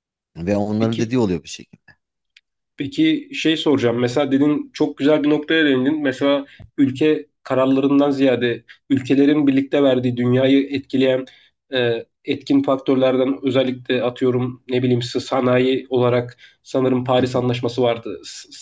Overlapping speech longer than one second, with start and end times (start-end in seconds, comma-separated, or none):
none